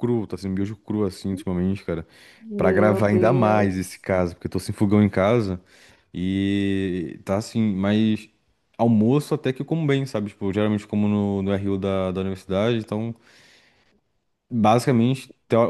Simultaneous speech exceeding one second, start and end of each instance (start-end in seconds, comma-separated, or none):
2.6-4.0